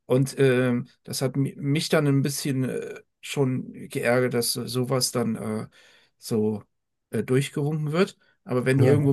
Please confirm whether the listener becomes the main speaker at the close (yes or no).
no